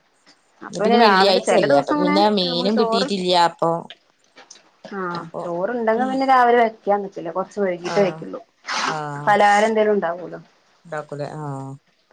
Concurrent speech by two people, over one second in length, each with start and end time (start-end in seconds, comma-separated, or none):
0.7-3.1